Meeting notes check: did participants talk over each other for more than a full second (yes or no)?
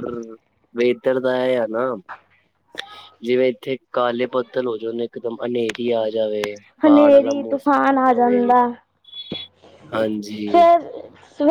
yes